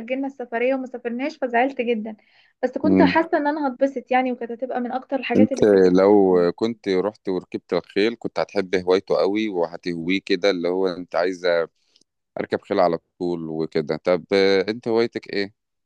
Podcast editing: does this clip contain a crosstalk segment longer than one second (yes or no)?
no